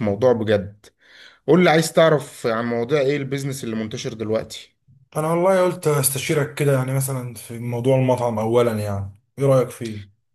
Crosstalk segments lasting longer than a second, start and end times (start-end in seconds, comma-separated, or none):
none